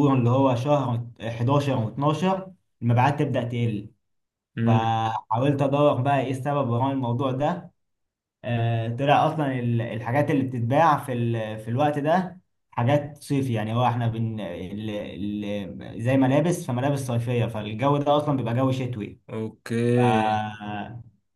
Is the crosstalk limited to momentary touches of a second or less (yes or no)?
yes